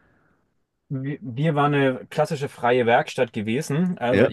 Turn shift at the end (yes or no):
no